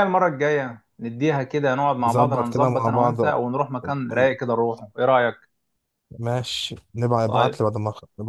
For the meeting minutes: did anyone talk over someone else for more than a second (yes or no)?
yes